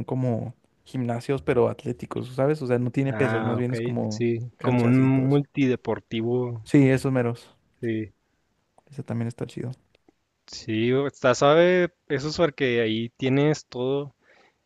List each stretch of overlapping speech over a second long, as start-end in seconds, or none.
3.1-5.4